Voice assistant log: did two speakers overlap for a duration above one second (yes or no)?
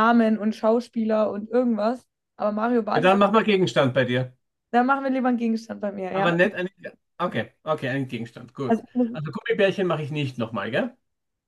no